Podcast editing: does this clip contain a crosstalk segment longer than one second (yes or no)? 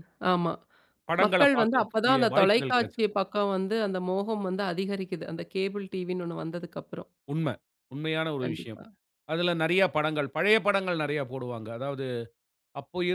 yes